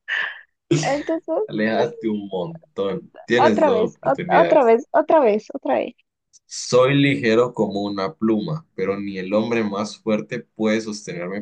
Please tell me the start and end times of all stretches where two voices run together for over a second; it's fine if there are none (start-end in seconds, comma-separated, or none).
3.4-4.7